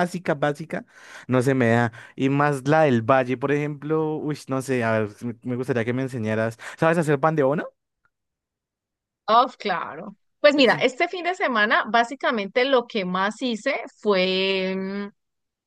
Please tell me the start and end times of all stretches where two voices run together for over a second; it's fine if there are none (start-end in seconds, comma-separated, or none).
none